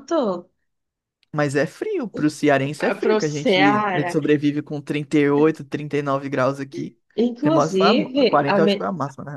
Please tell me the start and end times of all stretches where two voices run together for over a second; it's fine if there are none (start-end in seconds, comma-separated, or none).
2.8-4.2, 7.4-8.7